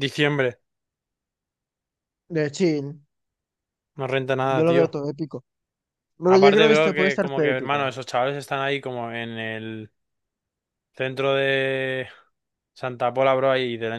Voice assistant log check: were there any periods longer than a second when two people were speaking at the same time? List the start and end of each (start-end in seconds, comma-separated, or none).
6.2-7.9